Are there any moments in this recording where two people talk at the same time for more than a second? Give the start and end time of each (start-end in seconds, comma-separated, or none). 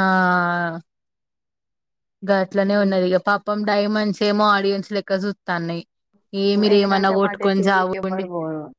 6.7-8.3